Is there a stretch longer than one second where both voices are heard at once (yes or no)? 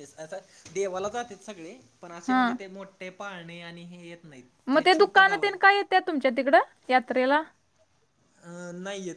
no